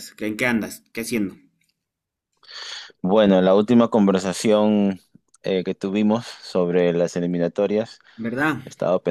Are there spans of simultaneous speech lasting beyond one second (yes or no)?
no